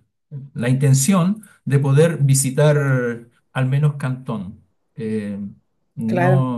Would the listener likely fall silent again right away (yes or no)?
yes